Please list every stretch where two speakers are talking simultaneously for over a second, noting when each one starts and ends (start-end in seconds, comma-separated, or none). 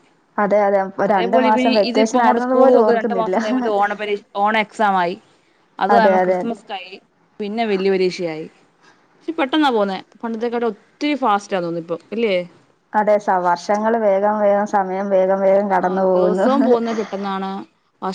1.2-3.4